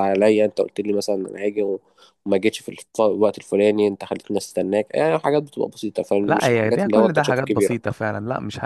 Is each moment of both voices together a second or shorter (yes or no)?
no